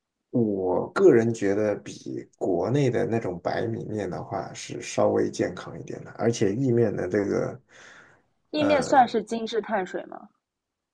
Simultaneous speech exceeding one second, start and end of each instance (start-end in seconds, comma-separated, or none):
none